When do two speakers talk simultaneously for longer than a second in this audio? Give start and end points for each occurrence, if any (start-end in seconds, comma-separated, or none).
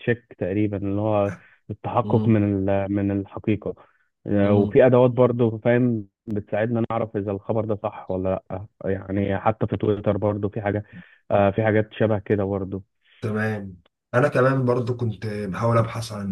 none